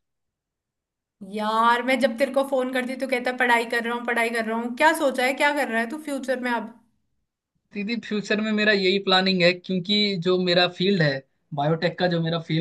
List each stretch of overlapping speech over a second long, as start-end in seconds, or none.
none